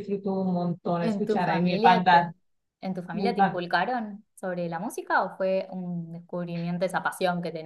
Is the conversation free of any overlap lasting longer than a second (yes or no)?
no